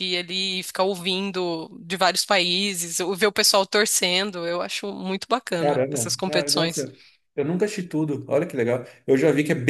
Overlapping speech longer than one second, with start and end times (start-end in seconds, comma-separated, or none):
5.6-6.8